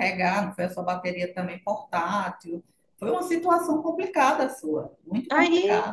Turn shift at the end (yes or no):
yes